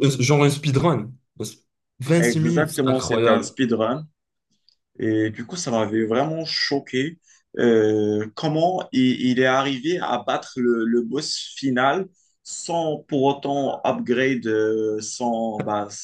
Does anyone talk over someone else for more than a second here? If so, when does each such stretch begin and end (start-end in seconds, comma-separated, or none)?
2.2-3.6